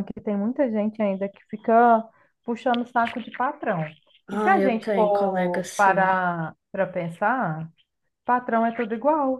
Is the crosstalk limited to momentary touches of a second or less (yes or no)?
no